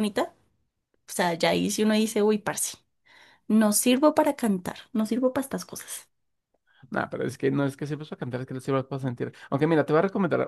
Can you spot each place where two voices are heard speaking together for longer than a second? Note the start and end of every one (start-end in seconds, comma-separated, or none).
none